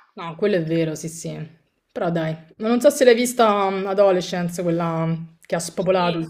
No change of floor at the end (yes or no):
no